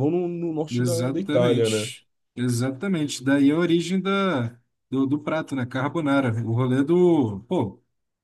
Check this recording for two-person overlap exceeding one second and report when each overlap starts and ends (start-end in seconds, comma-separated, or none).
0.7-1.9